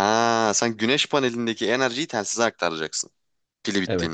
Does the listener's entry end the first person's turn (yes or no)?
yes